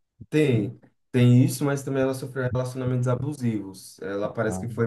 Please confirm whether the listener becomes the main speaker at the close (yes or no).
no